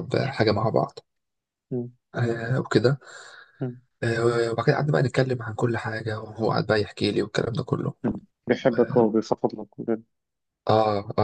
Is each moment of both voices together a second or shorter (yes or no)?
yes